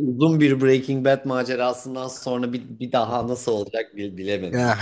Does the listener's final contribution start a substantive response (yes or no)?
yes